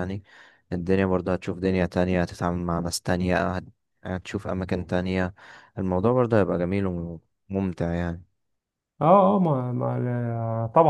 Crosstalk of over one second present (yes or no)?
no